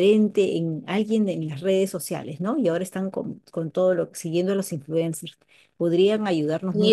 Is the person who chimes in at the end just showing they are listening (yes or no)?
no